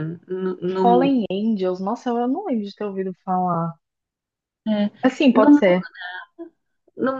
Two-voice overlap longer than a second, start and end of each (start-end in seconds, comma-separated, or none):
none